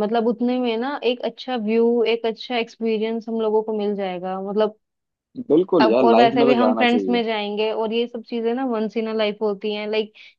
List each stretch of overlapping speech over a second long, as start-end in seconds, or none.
5.8-7.2